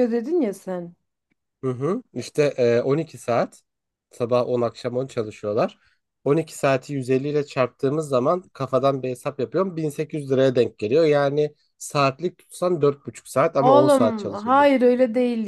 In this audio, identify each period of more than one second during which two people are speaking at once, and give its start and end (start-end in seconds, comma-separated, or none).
13.6-14.8